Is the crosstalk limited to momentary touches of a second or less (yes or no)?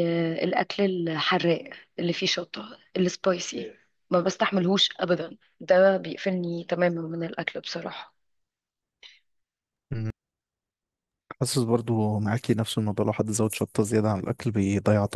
yes